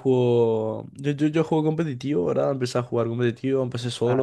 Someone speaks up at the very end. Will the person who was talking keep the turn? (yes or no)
yes